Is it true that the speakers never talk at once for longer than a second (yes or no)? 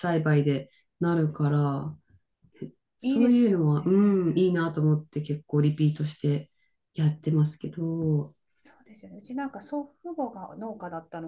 no